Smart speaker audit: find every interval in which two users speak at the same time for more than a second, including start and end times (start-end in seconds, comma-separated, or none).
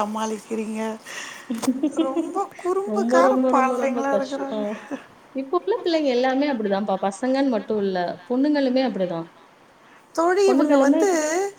2.9-4.6